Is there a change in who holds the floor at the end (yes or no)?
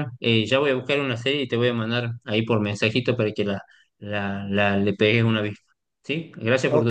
yes